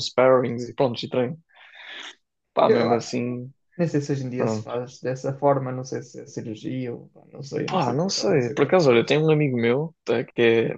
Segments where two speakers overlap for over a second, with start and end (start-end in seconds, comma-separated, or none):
7.7-9.2